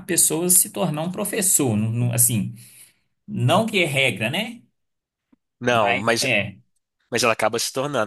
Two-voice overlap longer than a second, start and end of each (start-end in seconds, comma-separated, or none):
none